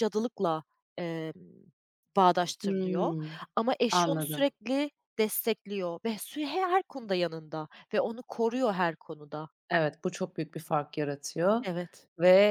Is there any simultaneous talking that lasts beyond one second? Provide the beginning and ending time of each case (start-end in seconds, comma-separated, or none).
none